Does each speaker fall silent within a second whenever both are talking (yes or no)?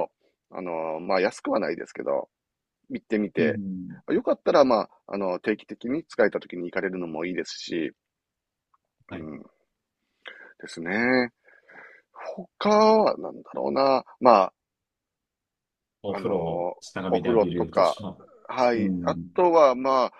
no